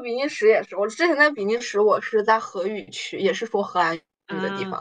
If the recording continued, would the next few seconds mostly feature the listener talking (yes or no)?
no